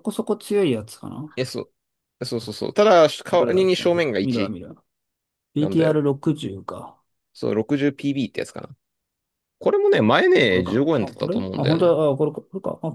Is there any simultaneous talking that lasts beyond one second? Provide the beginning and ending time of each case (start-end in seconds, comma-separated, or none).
3.3-4.5, 10.4-12.0